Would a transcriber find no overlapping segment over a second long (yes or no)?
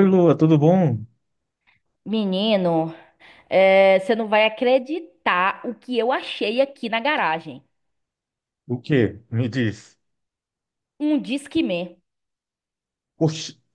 yes